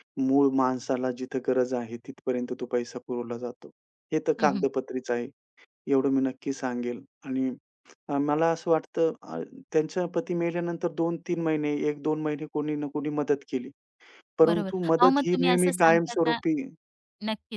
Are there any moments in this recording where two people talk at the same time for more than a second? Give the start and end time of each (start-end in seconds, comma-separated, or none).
14.5-16.4